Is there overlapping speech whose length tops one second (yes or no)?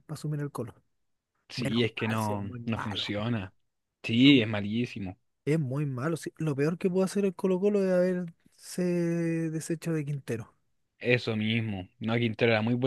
yes